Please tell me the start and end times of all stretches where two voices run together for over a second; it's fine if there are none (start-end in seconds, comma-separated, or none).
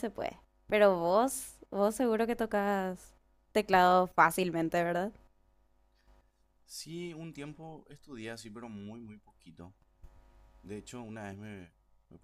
none